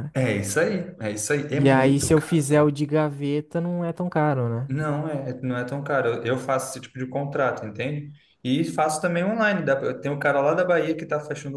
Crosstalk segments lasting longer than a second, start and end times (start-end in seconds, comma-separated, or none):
1.5-2.7